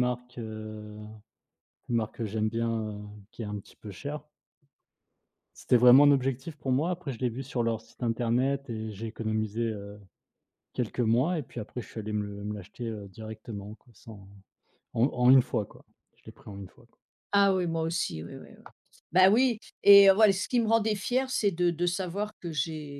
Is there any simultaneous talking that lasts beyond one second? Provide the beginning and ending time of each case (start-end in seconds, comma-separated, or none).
none